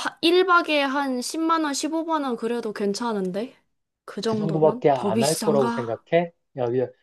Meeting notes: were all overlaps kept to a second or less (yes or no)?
no